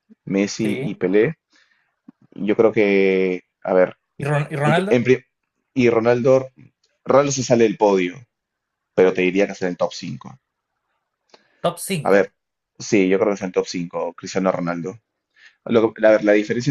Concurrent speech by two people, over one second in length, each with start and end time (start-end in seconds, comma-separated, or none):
none